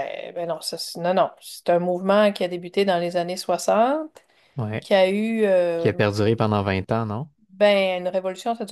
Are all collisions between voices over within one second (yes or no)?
yes